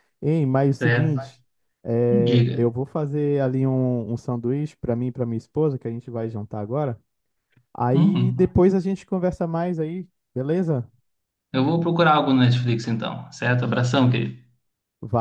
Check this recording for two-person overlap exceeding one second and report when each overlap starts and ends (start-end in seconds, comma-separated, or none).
none